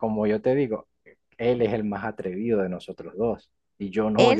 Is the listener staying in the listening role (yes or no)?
yes